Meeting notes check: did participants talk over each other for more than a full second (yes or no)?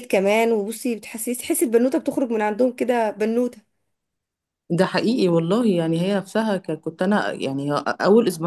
no